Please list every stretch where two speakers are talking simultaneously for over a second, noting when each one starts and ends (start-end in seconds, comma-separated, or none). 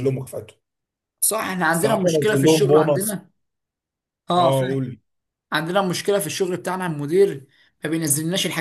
1.7-3.2